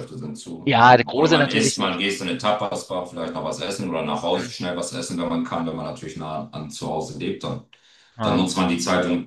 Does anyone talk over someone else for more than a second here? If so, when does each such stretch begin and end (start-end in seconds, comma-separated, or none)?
0.7-2.0